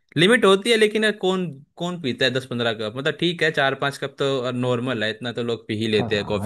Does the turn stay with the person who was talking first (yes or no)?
no